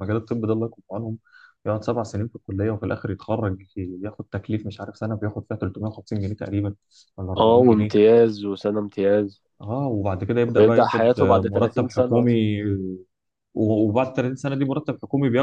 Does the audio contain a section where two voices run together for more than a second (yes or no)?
yes